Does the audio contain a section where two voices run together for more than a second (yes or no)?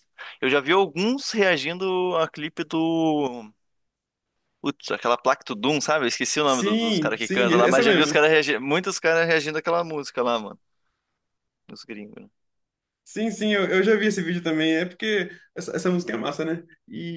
yes